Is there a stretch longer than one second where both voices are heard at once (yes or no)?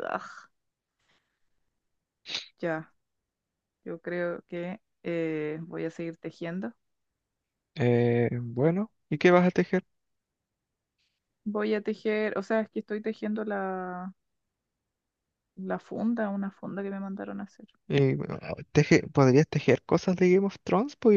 no